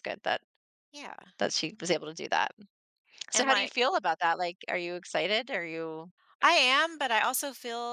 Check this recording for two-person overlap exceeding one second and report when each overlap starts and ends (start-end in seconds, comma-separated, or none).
none